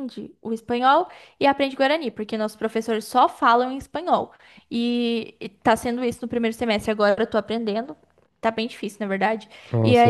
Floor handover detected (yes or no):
no